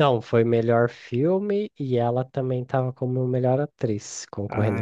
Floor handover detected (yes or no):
yes